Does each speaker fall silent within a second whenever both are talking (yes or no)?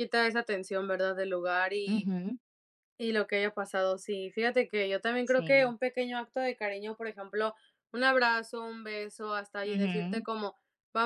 yes